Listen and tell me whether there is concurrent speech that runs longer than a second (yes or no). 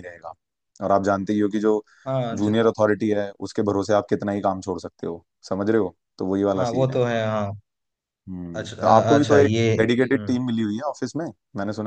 yes